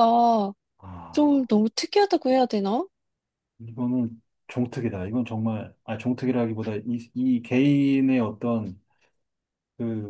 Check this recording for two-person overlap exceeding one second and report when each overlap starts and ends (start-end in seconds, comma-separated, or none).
none